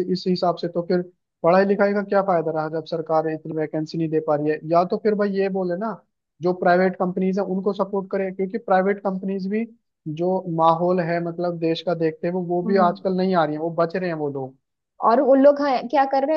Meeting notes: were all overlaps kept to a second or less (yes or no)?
yes